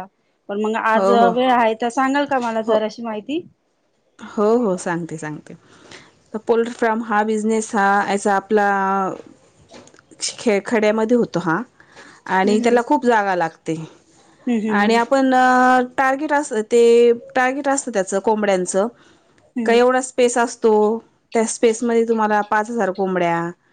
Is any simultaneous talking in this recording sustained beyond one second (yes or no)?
no